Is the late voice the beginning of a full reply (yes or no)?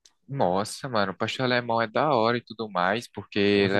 yes